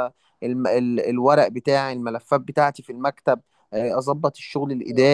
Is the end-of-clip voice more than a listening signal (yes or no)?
no